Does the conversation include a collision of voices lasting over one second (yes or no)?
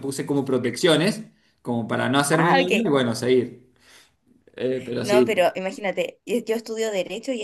no